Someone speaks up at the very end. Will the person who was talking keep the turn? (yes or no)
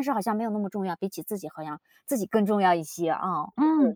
no